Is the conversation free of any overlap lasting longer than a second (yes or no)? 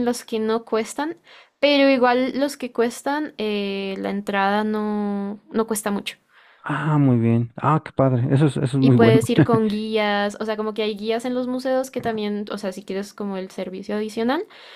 yes